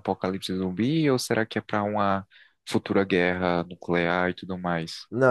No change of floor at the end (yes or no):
no